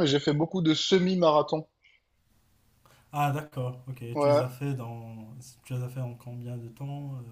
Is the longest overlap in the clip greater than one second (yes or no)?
no